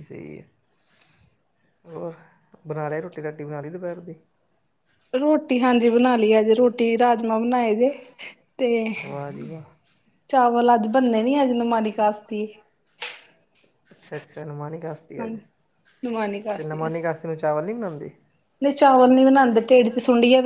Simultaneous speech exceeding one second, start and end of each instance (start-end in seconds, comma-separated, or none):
none